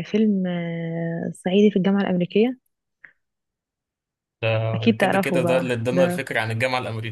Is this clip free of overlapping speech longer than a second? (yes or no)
no